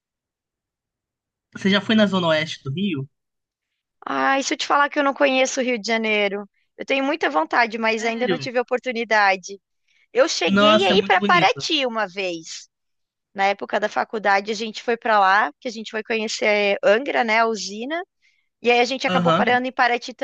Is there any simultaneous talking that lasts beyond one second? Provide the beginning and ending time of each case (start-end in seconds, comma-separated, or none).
10.4-11.7